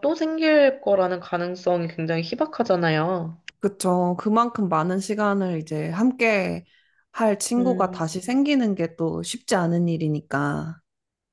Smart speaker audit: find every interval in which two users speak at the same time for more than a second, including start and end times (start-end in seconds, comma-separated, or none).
none